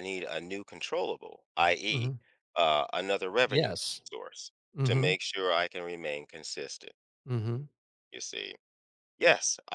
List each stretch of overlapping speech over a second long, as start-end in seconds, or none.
none